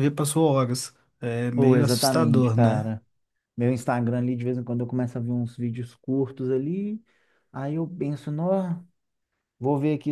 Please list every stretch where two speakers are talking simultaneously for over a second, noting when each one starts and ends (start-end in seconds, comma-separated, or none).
1.6-2.9